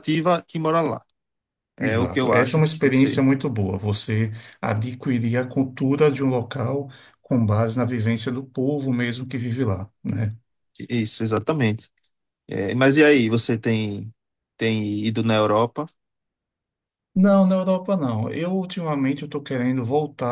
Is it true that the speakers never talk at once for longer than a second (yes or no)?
no